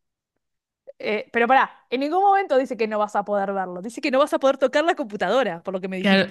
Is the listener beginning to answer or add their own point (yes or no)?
yes